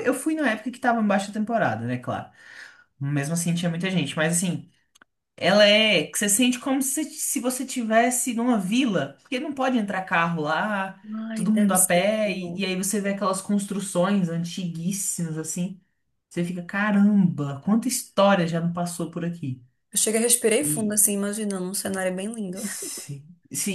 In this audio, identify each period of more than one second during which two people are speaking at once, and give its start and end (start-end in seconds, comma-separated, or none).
11.3-12.6